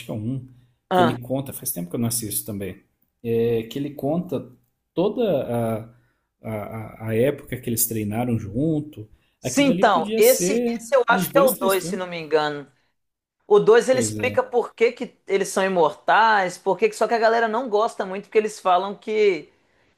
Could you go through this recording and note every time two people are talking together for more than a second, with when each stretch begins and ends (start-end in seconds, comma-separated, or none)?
9.4-12.0